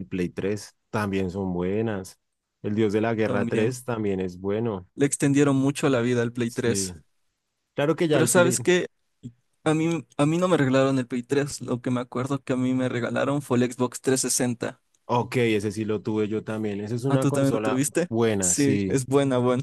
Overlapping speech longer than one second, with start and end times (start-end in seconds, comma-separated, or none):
17.1-19.0